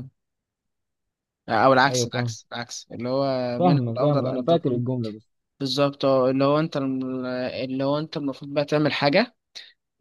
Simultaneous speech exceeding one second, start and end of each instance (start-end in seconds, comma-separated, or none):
3.6-4.8